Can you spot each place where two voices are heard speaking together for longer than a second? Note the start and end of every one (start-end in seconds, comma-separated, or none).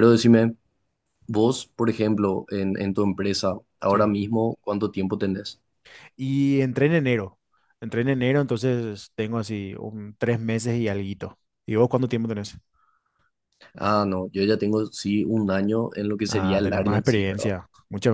16.3-17.5